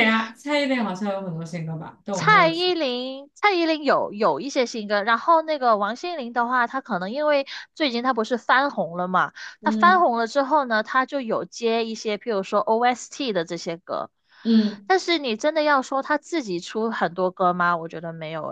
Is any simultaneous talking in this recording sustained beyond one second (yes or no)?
no